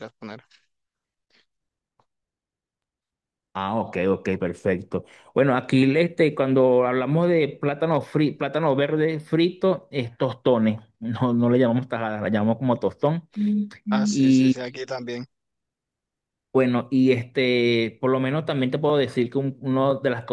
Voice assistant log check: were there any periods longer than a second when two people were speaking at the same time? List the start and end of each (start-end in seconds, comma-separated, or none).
none